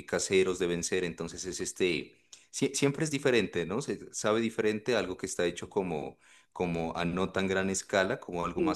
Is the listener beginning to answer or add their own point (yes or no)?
no